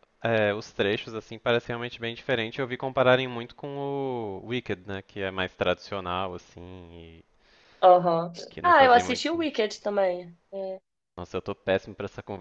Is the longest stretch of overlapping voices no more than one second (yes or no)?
no